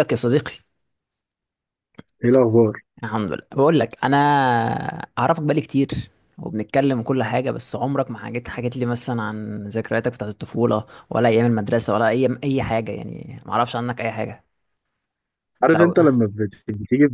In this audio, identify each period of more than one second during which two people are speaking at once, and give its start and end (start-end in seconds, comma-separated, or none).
none